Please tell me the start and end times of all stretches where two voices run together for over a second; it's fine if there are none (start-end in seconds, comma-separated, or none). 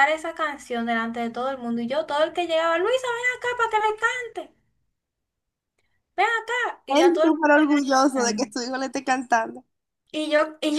6.9-8.5